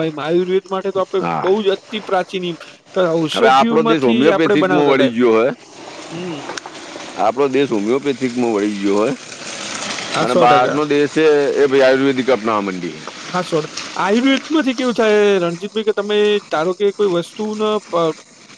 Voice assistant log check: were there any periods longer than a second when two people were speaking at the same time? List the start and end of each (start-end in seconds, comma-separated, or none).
3.3-4.9